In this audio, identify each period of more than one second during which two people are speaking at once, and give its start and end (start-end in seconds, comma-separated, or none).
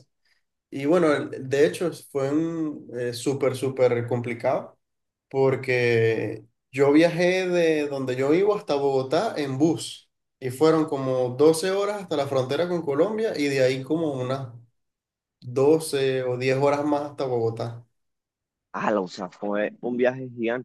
none